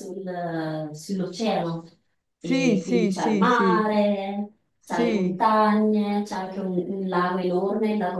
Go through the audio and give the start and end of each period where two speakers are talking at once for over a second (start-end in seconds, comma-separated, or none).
2.4-3.9